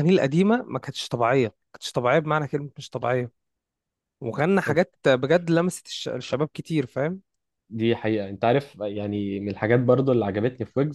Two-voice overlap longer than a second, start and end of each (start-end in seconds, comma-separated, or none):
none